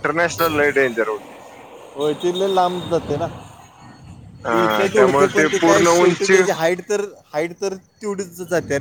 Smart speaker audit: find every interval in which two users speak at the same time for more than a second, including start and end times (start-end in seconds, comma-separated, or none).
4.6-6.4